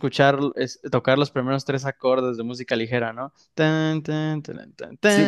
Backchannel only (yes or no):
no